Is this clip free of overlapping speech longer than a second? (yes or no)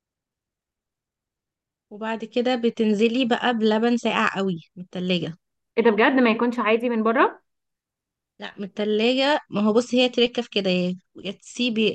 yes